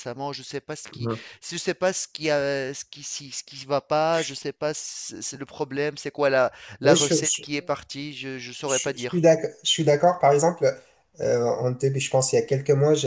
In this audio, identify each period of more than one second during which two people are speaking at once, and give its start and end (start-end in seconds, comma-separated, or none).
none